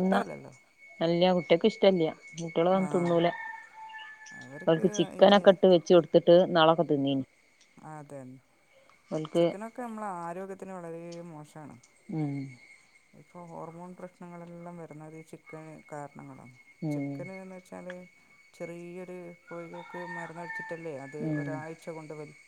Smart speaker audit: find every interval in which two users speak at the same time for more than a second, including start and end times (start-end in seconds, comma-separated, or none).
none